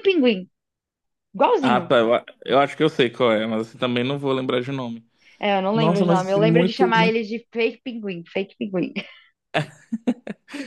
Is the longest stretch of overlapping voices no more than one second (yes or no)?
no